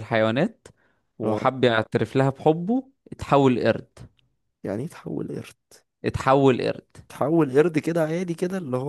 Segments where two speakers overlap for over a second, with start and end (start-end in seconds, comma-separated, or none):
none